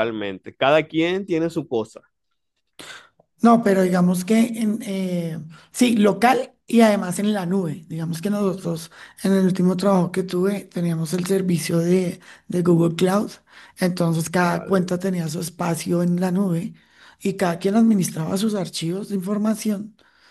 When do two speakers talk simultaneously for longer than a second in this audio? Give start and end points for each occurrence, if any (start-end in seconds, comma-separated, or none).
none